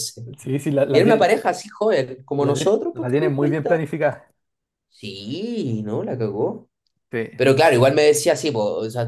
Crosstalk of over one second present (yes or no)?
yes